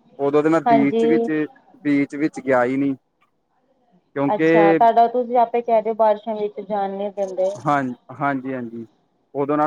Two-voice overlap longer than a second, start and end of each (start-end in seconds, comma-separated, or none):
none